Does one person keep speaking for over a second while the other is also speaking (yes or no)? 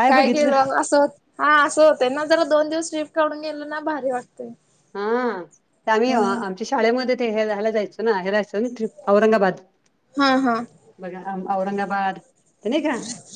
no